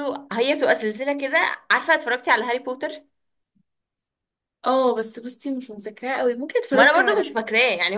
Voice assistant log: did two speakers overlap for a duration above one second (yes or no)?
no